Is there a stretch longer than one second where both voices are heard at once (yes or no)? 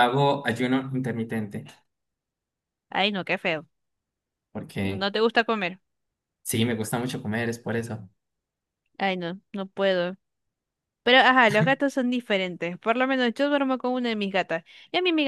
no